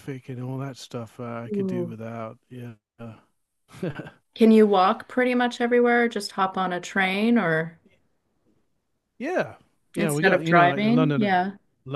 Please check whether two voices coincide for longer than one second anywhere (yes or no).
yes